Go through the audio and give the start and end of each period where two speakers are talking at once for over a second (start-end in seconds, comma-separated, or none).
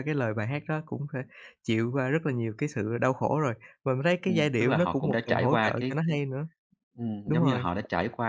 4.2-6.2